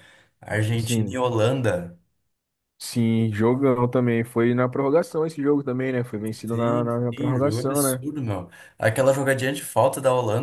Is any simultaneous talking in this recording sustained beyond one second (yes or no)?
yes